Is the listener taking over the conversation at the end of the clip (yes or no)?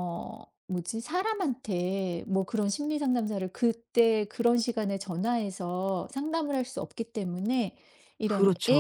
no